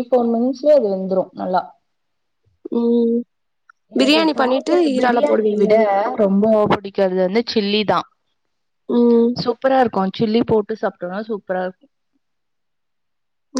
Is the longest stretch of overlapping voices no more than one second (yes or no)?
no